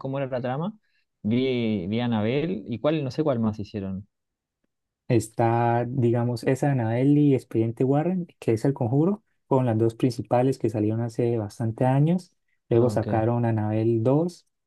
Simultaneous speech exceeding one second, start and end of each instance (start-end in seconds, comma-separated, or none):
none